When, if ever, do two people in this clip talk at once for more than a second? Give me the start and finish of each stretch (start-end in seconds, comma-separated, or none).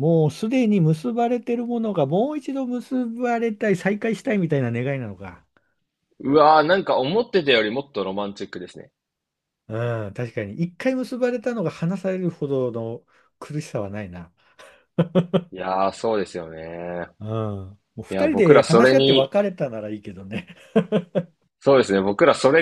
18.1-19.3